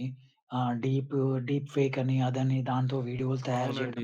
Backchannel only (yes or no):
no